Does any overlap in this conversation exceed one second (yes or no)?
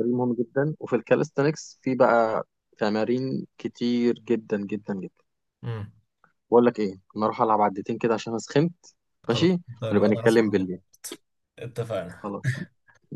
yes